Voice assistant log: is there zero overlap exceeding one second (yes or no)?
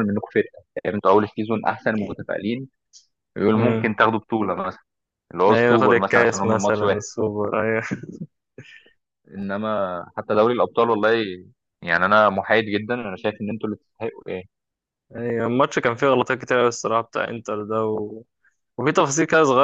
no